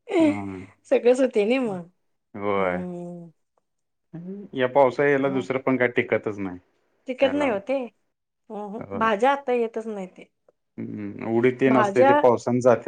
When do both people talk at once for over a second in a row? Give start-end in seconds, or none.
none